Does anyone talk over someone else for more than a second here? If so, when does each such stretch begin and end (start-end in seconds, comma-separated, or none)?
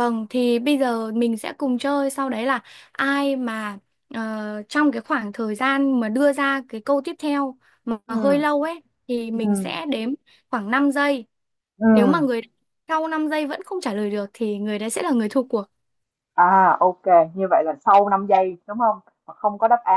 none